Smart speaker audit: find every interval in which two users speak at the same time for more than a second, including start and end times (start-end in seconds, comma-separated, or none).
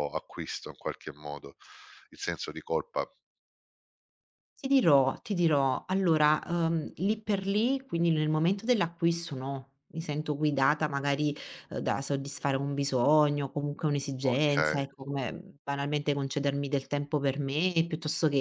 none